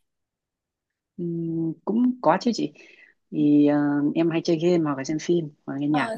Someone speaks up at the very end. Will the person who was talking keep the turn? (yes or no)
no